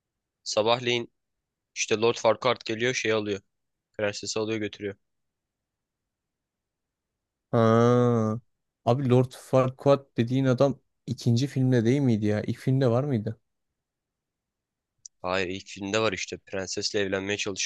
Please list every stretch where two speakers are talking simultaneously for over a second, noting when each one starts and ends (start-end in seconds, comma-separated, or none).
none